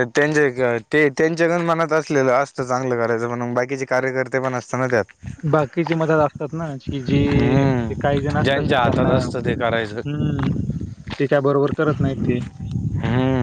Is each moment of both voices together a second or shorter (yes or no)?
no